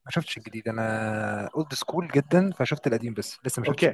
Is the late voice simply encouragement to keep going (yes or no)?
no